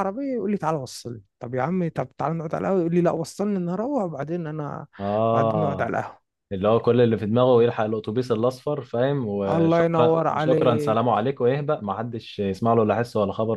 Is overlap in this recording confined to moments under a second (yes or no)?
no